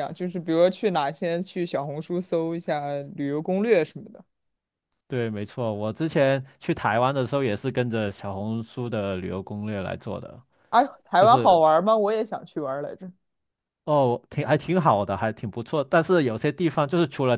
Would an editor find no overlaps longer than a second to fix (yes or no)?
yes